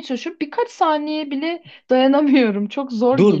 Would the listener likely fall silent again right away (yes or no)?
no